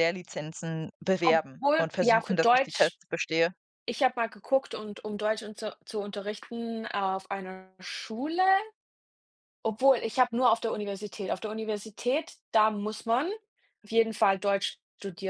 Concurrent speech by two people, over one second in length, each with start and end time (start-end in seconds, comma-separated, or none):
1.2-3.0